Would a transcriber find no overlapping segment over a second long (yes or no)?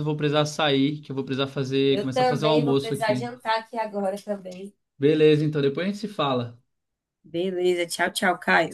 no